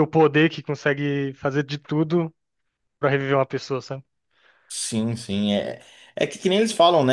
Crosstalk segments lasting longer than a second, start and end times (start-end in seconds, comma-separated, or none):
none